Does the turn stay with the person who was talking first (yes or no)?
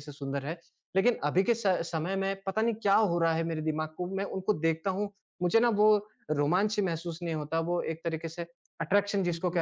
yes